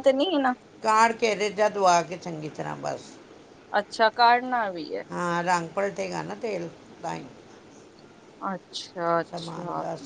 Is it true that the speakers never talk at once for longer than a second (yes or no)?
yes